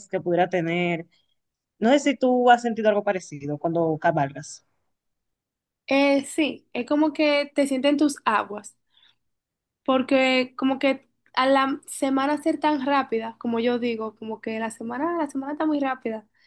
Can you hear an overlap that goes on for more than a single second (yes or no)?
no